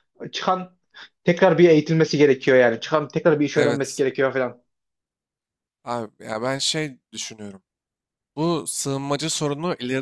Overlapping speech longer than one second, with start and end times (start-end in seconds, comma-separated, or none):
none